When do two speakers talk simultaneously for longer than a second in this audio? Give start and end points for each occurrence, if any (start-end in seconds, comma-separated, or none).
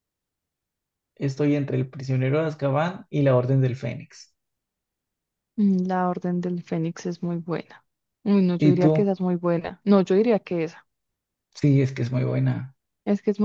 none